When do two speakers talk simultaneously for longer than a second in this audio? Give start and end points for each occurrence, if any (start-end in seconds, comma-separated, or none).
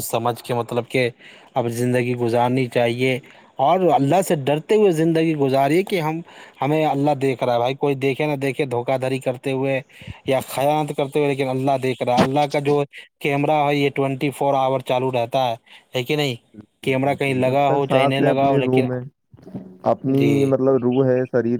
16.8-18.9